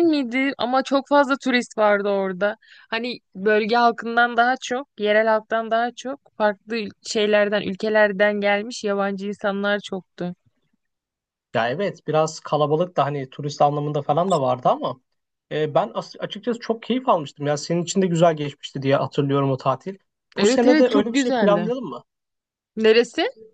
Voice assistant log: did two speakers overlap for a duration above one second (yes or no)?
yes